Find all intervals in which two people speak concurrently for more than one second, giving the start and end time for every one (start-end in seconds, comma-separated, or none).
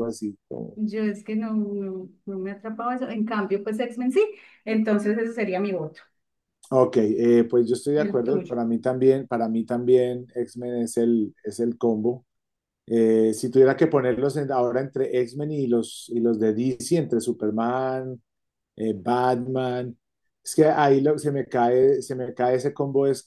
none